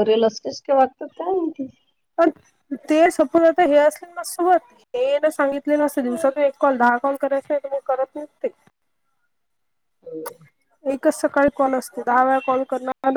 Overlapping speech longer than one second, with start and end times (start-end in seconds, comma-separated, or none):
none